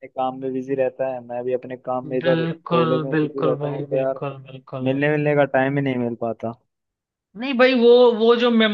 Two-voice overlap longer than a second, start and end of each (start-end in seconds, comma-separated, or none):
2.2-4.2